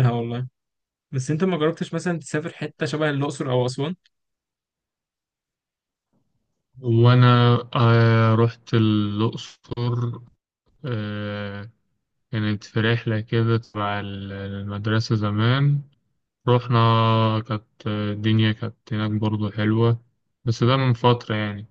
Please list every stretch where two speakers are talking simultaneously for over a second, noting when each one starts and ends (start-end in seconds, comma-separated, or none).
none